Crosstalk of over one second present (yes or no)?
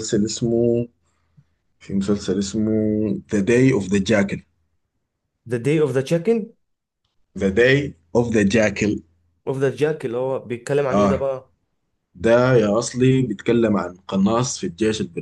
no